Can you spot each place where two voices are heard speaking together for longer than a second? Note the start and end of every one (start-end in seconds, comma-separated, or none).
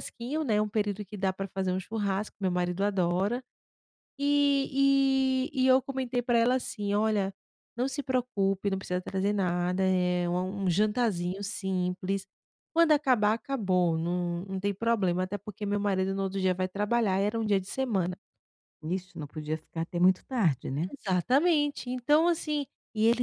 none